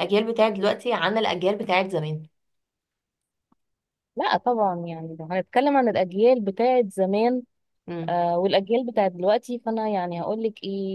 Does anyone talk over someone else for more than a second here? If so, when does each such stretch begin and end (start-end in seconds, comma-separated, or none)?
none